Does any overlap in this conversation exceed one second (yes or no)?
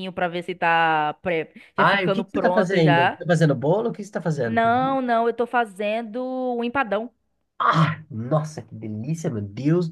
yes